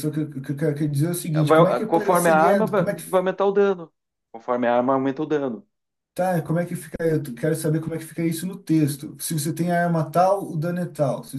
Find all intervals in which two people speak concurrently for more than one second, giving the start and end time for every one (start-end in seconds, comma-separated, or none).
1.4-3.0